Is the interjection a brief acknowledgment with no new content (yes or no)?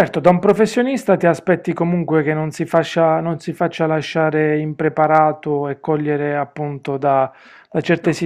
yes